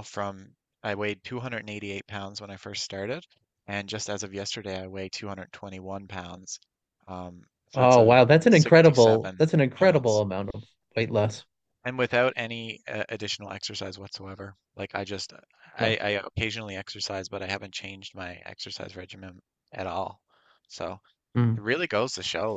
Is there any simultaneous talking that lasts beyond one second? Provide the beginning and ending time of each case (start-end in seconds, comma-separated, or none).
7.7-10.2